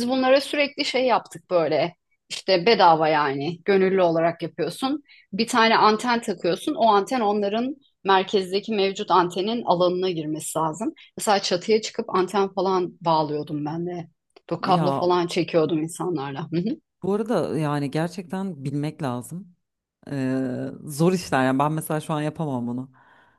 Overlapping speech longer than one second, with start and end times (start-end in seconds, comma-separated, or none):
none